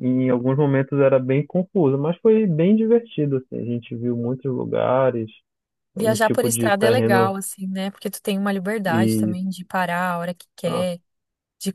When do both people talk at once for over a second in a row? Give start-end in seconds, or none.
6.0-7.3